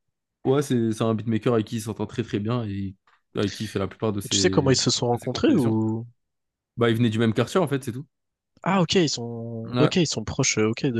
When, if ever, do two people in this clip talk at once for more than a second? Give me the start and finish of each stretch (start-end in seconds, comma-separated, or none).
4.2-5.8